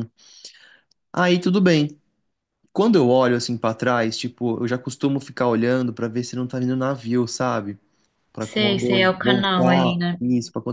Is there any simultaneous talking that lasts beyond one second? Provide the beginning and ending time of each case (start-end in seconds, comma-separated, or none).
8.5-10.2